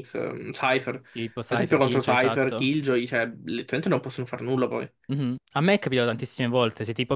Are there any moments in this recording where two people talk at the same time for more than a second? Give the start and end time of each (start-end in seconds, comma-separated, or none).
1.5-2.7